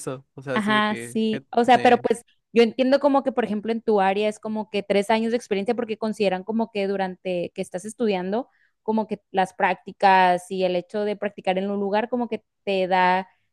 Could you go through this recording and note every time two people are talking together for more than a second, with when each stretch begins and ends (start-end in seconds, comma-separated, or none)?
0.5-2.0